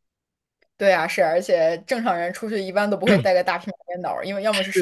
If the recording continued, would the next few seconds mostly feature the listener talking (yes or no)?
no